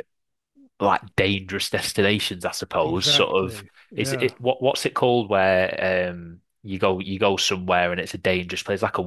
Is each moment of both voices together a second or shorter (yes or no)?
no